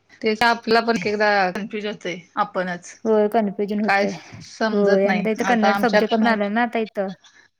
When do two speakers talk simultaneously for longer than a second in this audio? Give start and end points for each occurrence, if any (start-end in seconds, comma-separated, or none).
4.7-6.4